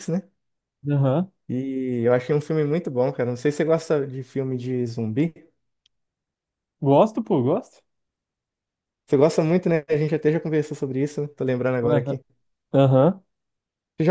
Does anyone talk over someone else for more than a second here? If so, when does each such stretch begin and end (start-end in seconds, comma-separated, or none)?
none